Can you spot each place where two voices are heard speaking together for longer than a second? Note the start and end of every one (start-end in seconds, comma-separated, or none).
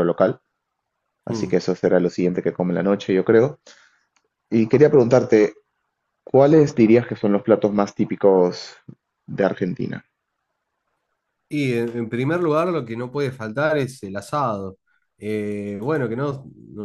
none